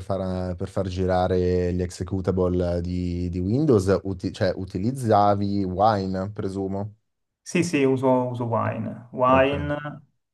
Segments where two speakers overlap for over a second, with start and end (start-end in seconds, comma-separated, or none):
none